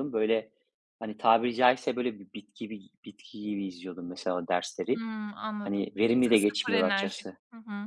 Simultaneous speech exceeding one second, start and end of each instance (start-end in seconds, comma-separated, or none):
5.6-7.4